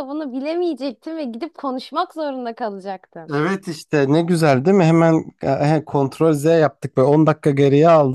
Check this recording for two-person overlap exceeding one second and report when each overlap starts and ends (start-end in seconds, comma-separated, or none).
none